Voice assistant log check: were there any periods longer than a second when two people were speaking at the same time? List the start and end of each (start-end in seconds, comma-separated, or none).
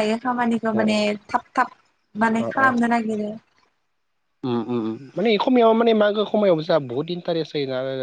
none